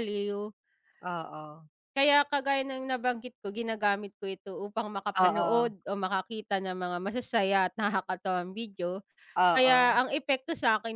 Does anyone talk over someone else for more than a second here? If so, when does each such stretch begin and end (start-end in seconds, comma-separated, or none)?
none